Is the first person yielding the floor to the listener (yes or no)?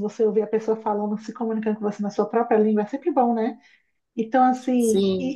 yes